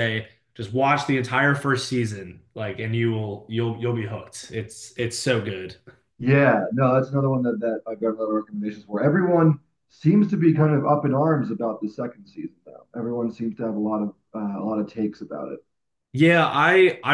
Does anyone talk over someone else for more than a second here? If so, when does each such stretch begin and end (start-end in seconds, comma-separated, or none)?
none